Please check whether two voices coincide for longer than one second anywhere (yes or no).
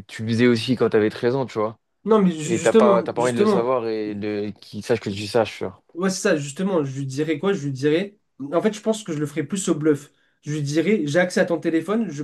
yes